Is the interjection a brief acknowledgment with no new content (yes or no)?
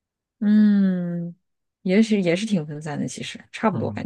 no